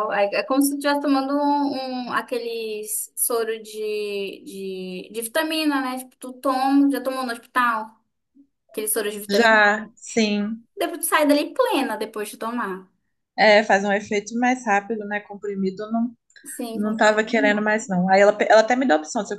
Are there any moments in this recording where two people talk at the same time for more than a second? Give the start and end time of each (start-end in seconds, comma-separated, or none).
none